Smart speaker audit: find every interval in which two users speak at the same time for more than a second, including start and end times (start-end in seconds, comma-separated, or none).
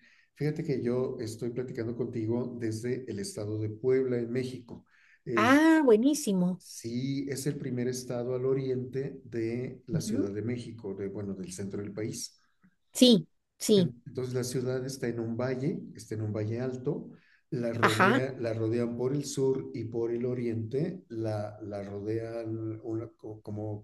none